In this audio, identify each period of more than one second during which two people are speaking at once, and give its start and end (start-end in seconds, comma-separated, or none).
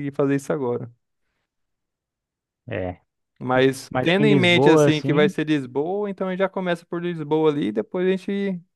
3.9-5.3